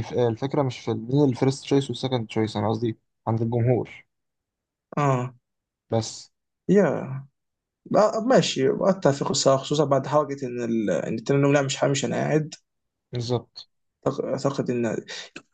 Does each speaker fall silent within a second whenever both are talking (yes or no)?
yes